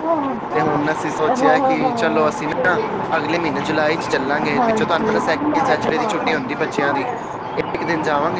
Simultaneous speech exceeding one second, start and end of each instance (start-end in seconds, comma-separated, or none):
0.5-1.9, 4.5-6.4